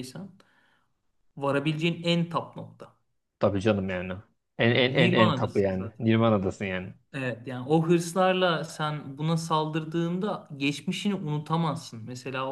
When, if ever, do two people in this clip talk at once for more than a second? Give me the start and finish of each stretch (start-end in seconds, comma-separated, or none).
4.7-6.1